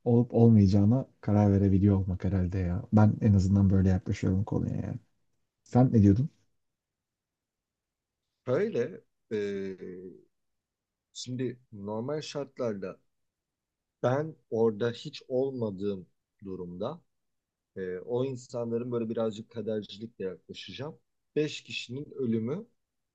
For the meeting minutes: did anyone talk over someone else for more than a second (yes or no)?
no